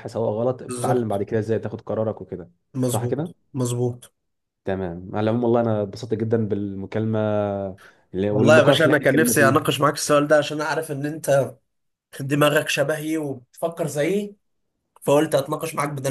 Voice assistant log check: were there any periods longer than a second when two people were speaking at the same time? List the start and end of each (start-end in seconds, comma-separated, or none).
8.3-9.5